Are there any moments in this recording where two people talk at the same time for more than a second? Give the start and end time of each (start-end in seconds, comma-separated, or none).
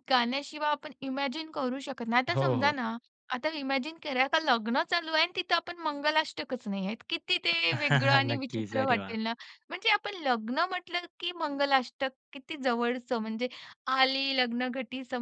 7.7-9.1